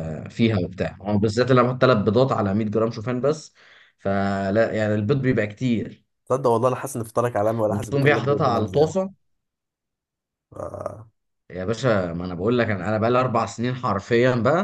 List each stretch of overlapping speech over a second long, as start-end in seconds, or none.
7.7-8.9